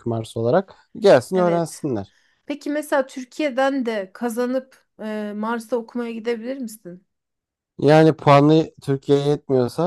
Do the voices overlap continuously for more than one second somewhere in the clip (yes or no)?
no